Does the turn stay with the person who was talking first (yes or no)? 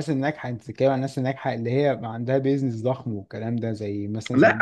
no